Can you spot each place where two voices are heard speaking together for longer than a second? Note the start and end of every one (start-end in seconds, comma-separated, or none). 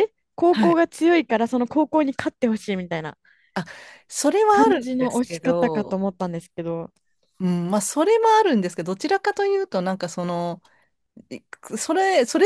4.5-6.0